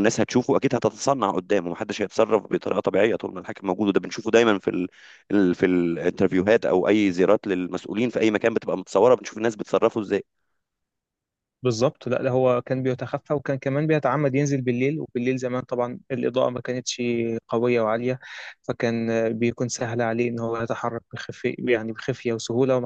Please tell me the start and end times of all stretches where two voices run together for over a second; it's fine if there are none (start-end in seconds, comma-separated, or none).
none